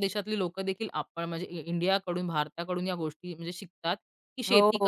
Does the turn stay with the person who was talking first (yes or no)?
yes